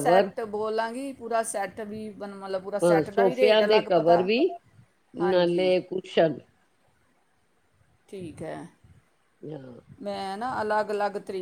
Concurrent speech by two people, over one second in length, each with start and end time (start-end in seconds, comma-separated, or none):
2.8-4.3